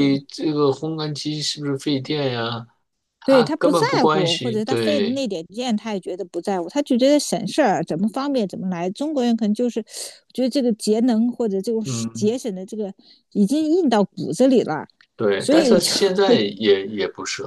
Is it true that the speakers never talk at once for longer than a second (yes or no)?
no